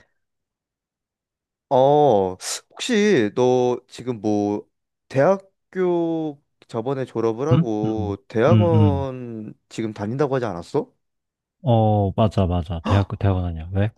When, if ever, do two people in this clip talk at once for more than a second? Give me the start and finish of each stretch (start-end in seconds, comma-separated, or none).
7.5-9.1